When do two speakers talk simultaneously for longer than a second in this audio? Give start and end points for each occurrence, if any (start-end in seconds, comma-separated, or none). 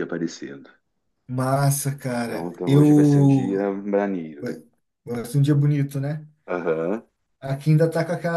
2.2-3.6